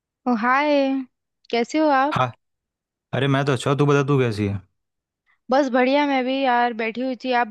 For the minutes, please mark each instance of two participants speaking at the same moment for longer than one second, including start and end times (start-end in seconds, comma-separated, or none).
none